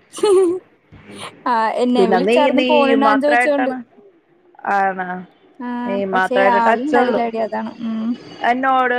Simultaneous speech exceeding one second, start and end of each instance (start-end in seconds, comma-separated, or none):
1.9-3.7